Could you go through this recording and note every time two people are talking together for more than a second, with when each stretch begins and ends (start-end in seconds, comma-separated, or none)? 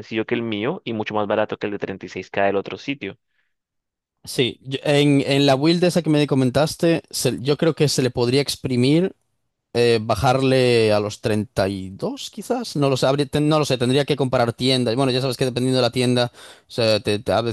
none